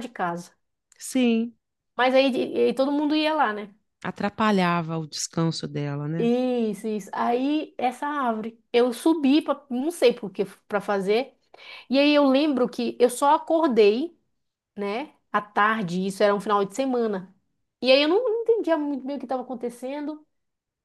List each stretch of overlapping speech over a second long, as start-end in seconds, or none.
none